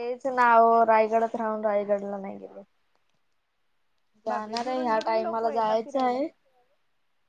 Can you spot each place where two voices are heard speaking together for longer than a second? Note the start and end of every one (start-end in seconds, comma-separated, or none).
4.3-6.2